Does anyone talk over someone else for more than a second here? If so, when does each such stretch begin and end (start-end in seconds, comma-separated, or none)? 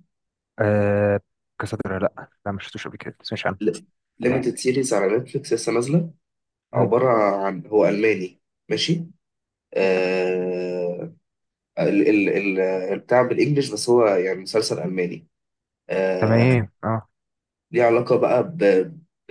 none